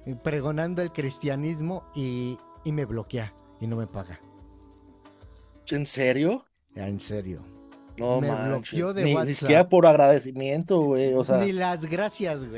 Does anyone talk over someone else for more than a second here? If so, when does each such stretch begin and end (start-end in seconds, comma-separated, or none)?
8.1-9.7